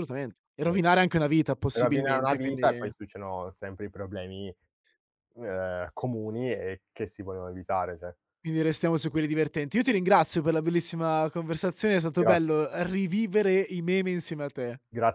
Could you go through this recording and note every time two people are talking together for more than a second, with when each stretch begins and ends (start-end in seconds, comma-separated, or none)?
1.7-2.9